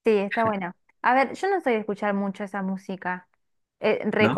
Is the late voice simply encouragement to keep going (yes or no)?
yes